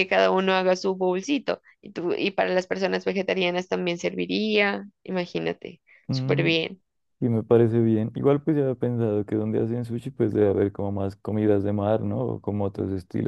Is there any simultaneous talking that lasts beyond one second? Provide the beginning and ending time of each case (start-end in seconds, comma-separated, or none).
none